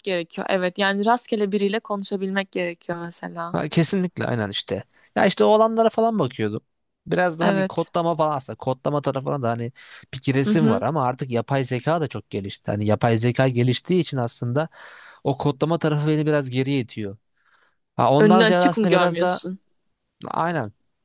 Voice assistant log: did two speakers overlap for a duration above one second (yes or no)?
yes